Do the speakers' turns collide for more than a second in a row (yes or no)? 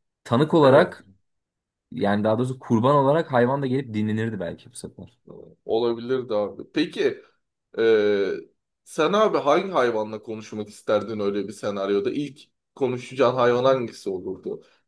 no